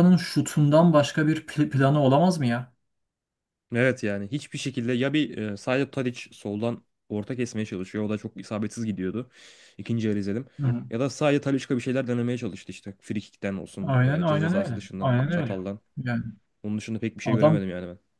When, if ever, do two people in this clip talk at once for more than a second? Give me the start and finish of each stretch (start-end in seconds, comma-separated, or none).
13.8-15.6